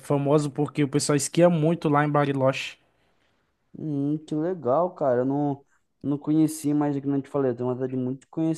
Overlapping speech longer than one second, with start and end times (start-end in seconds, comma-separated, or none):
none